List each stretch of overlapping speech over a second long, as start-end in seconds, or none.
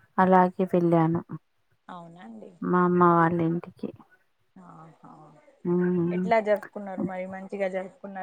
none